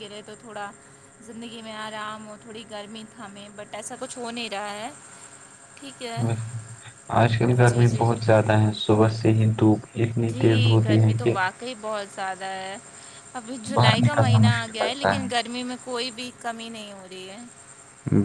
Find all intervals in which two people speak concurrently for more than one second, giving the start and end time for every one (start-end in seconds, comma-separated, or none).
13.7-15.1